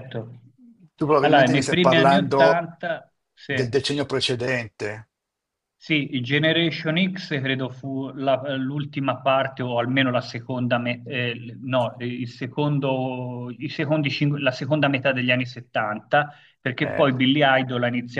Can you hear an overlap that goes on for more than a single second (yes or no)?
yes